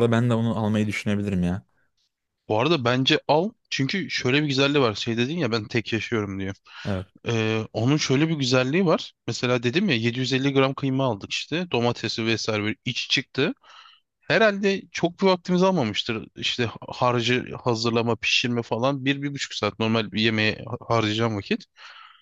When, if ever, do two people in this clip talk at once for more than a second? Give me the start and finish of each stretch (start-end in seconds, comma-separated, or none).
none